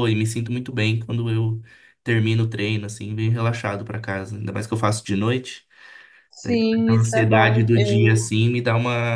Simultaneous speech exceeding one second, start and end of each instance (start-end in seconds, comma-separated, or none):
6.4-8.2